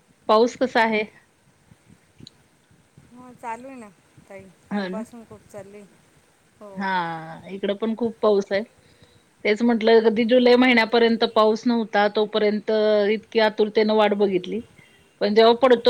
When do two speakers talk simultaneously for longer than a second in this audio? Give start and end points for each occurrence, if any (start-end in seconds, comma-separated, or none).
none